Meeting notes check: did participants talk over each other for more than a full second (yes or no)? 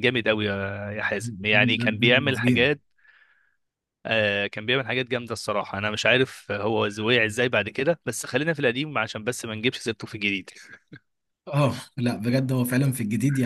yes